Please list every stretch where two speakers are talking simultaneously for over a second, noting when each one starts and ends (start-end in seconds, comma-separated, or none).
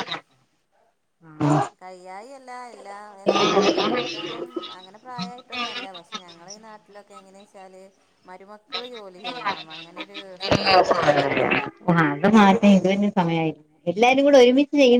none